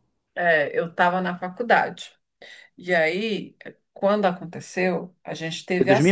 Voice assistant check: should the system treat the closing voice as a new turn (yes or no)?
yes